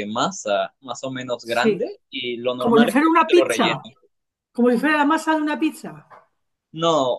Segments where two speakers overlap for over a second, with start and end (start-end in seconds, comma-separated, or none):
2.6-3.9